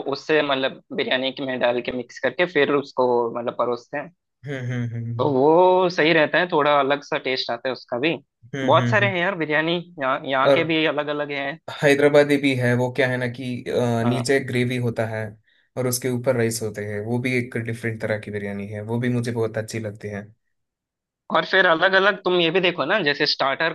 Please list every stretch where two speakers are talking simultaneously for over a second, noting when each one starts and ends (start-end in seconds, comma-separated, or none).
none